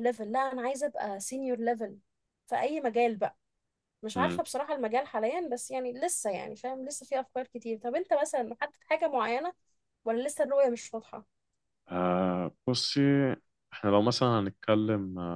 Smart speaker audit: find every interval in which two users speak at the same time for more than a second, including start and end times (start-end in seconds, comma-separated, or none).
none